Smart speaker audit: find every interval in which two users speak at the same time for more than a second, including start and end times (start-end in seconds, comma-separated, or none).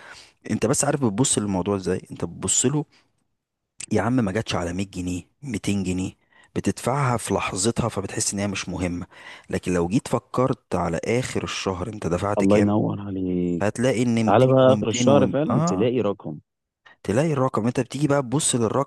14.2-15.9